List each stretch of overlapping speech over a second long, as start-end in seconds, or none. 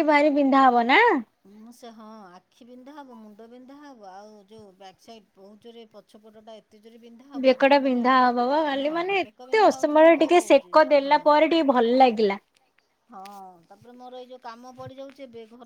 8.9-10.8